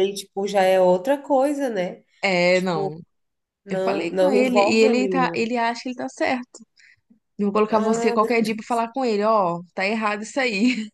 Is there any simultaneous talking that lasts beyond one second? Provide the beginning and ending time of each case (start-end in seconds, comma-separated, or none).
3.7-5.5